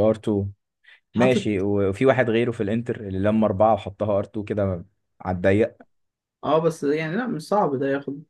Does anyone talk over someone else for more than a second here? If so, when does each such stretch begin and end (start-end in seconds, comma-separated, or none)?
none